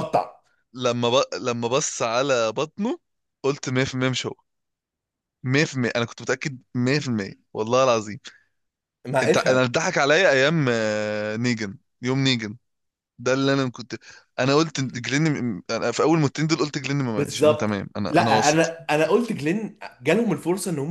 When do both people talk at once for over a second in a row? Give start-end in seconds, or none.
17.2-18.7